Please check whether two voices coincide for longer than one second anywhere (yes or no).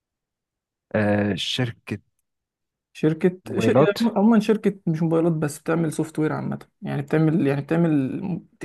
no